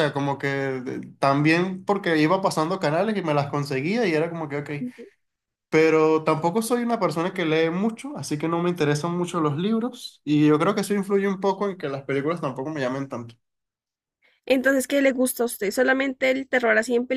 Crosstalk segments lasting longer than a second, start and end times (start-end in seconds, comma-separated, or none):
none